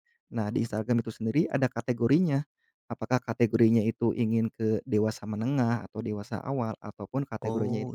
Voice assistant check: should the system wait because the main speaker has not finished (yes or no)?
yes